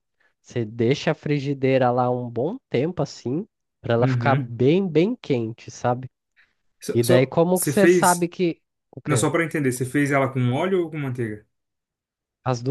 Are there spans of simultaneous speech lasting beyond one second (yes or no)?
yes